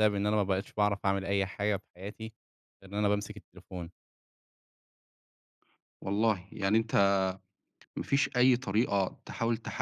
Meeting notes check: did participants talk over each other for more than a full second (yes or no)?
no